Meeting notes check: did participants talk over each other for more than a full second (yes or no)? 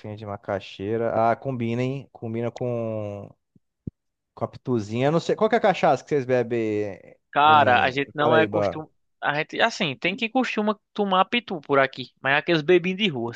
yes